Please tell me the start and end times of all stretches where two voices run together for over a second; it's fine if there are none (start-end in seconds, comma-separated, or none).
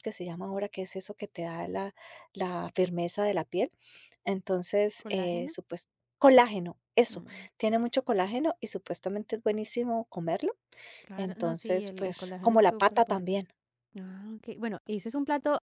11.2-13.4